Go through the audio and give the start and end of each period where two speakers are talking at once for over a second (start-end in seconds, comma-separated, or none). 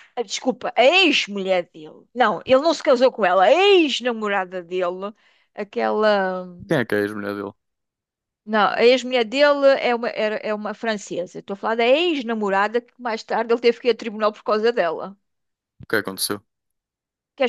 none